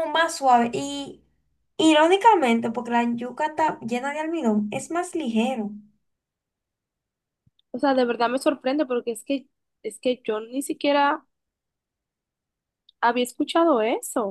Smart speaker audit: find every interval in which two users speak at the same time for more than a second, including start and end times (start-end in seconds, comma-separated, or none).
none